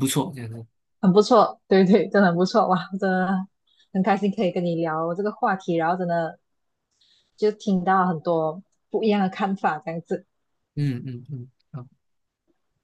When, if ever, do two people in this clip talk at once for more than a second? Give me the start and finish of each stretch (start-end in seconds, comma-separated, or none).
none